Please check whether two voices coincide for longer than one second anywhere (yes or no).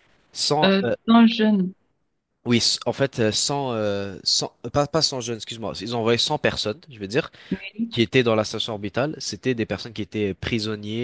no